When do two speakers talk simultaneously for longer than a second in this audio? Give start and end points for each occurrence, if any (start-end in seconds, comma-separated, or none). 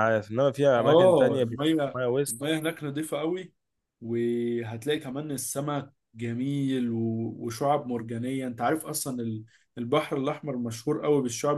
0.8-2.4